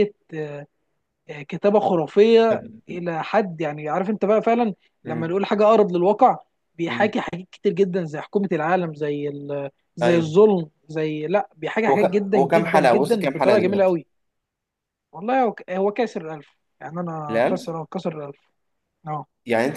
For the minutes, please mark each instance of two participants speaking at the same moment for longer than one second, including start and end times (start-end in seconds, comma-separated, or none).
11.9-14.0